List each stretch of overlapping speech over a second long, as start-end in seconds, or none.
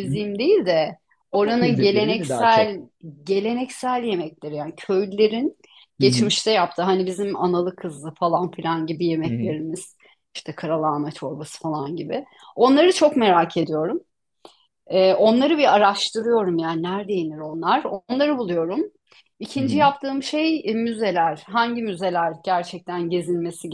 1.4-2.7